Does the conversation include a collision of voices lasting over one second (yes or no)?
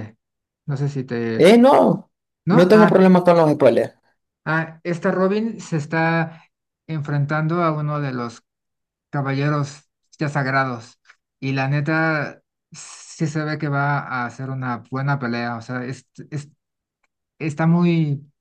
no